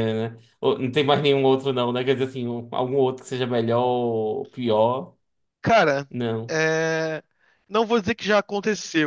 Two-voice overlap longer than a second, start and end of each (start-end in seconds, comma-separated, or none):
none